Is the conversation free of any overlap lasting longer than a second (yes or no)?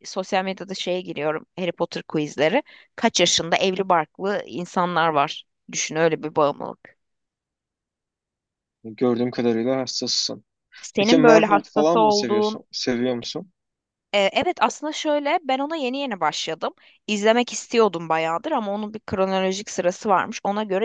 no